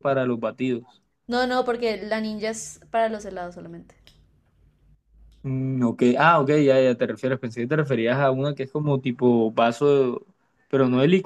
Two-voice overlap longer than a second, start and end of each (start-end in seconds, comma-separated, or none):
none